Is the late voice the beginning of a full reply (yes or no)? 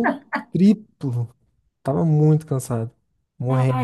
yes